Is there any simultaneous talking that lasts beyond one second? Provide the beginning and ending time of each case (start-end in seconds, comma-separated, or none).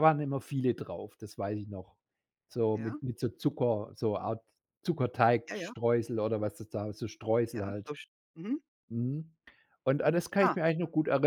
none